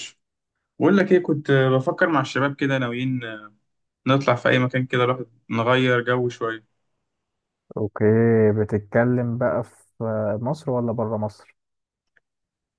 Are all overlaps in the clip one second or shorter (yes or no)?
yes